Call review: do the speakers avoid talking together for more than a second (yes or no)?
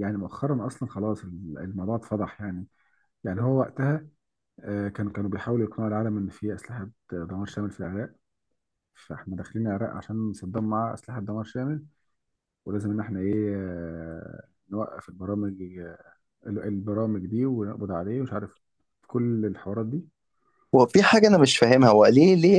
yes